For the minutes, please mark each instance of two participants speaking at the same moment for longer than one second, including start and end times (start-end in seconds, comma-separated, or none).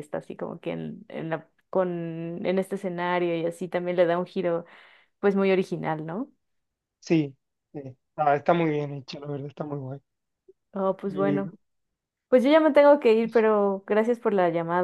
none